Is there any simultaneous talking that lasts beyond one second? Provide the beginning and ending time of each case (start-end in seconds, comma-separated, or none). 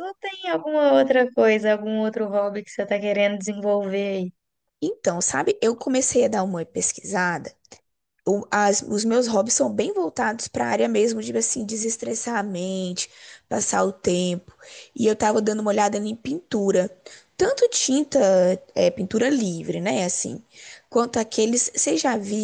none